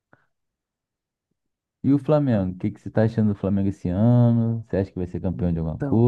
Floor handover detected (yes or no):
yes